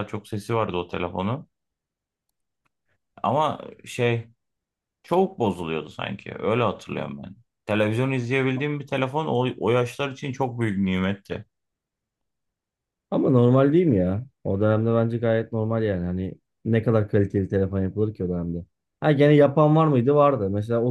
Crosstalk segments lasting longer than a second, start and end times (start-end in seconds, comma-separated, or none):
none